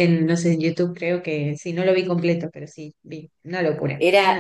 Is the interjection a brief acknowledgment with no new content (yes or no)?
no